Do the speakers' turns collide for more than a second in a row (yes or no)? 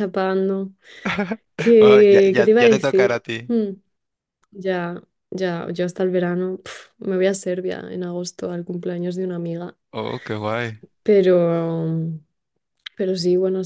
yes